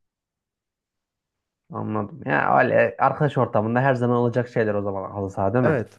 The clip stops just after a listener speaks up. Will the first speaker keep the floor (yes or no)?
no